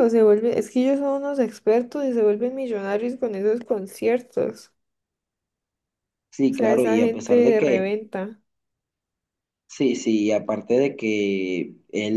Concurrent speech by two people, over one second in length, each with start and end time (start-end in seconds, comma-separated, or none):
6.5-7.9